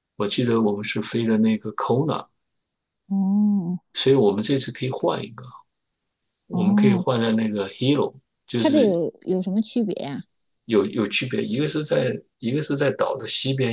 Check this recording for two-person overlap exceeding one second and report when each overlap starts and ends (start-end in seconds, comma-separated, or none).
none